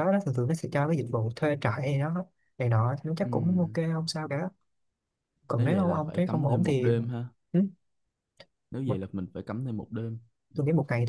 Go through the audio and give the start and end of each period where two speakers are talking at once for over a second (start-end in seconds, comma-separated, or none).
5.5-6.9